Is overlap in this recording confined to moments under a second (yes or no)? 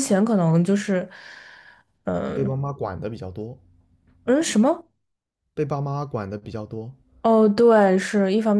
yes